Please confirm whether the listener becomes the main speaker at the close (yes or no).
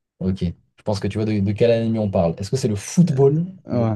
no